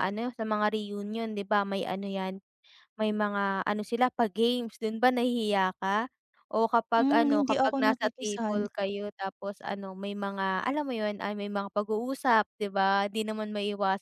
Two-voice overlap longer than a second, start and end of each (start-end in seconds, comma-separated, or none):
7.0-8.7